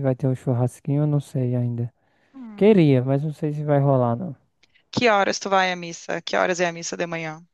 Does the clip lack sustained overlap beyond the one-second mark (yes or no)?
yes